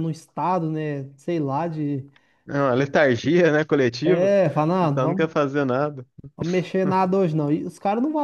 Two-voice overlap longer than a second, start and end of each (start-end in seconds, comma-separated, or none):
4.0-5.4